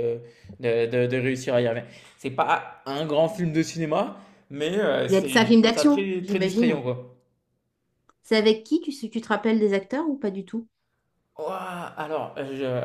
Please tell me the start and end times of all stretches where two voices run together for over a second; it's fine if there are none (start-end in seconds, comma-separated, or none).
5.1-6.8